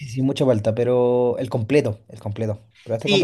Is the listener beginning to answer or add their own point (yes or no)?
yes